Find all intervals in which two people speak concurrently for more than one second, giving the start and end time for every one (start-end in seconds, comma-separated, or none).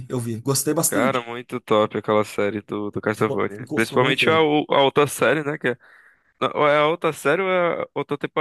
3.1-4.5